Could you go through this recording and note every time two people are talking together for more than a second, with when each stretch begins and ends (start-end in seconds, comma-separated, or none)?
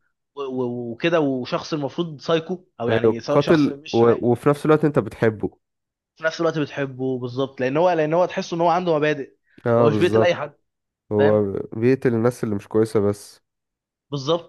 2.9-4.3